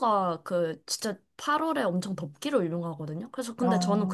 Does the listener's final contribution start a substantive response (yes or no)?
no